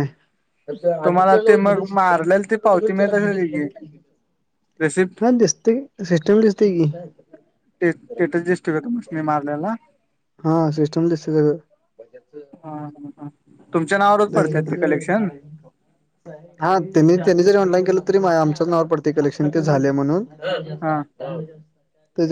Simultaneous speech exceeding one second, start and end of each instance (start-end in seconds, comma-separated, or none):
1.1-3.6